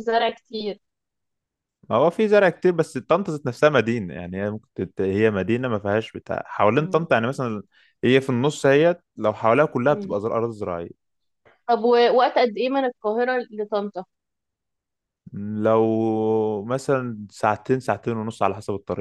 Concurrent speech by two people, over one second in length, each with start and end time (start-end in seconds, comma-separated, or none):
none